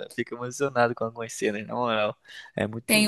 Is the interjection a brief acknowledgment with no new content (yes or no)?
no